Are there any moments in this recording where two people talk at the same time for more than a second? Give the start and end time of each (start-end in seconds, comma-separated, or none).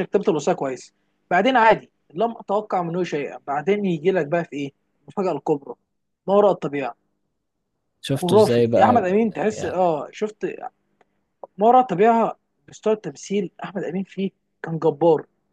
8.1-9.9